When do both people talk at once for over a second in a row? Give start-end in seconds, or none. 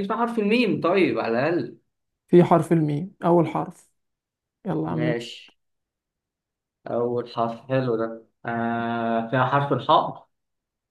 none